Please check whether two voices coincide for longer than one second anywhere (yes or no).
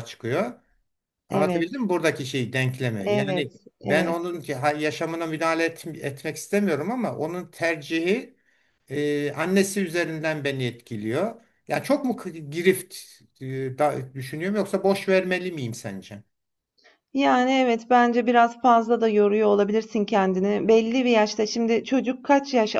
yes